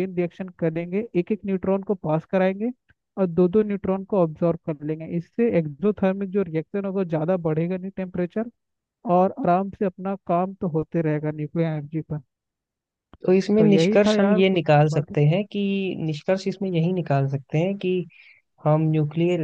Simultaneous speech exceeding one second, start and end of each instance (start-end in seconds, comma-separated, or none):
13.6-15.2